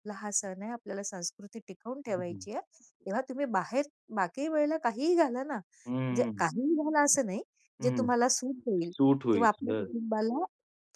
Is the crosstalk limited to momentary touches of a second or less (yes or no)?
yes